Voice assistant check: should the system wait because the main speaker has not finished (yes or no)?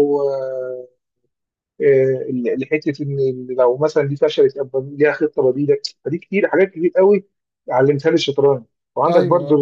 yes